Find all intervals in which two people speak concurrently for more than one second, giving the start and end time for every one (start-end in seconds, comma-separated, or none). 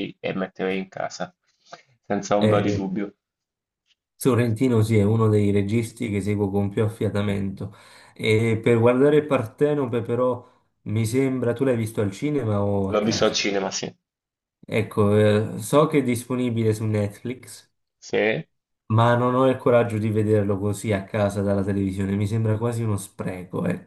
none